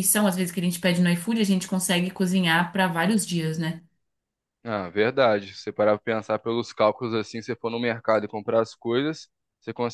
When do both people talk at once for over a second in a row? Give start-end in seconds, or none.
none